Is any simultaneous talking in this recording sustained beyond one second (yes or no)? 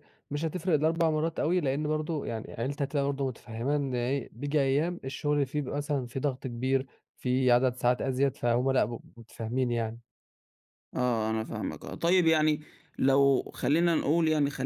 no